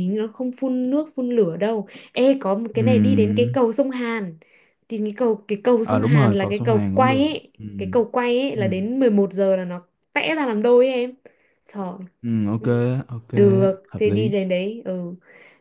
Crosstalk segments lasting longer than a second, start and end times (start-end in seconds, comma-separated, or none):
5.8-7.6